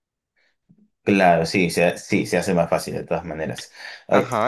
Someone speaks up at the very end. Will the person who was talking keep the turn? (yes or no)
no